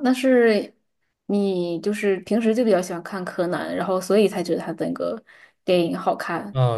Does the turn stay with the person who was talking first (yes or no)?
no